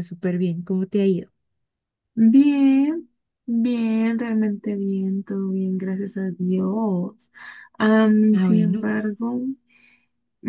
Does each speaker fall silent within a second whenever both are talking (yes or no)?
yes